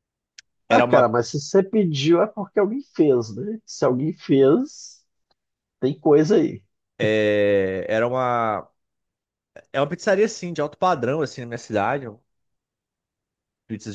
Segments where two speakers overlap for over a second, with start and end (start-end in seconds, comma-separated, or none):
none